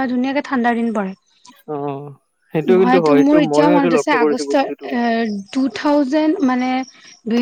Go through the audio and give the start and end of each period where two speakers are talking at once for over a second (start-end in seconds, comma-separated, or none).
2.8-4.8